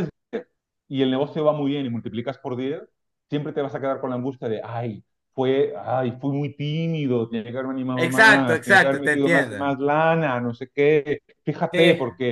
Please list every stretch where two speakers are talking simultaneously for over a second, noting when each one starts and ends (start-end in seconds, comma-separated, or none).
8.0-9.7